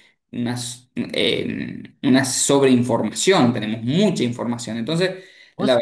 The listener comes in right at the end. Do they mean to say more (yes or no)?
no